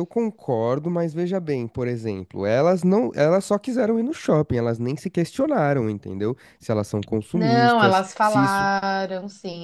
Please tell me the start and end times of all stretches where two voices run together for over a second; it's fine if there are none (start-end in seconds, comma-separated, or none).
7.3-8.7